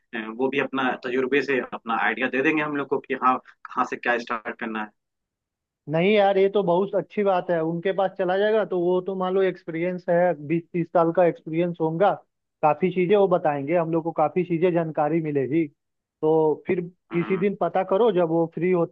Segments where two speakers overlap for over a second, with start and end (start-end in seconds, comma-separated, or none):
none